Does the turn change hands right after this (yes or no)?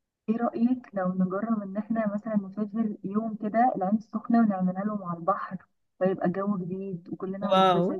yes